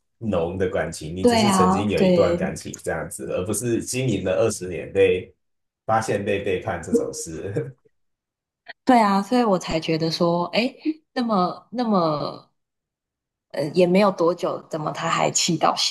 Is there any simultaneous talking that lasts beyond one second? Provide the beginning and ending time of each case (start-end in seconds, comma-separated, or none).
1.2-2.5